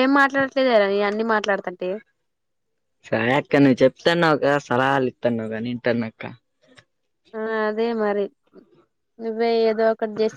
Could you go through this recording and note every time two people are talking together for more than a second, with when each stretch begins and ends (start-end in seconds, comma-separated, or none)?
none